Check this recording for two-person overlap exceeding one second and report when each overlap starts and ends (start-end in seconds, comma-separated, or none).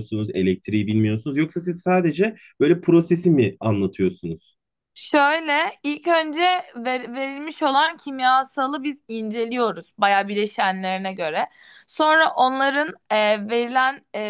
none